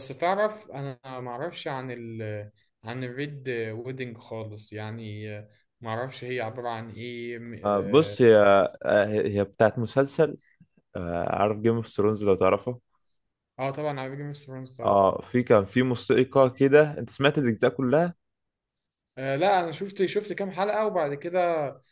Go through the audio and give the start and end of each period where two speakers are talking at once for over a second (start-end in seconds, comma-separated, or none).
none